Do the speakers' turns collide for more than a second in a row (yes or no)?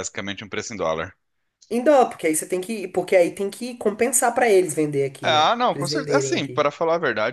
yes